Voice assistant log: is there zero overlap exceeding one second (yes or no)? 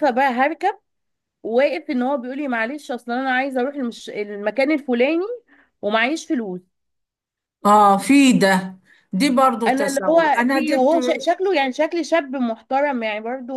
no